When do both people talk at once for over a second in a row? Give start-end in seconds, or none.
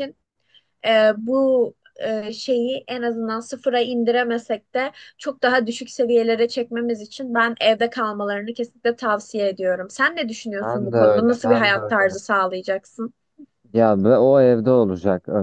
10.6-12.2